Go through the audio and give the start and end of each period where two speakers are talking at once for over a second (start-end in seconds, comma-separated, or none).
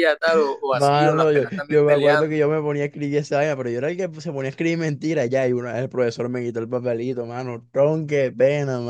0.7-2.4